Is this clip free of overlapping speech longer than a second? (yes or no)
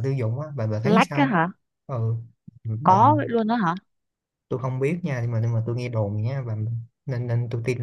yes